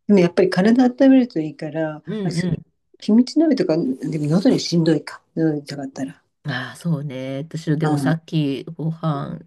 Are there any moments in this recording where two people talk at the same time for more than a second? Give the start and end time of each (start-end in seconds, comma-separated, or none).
none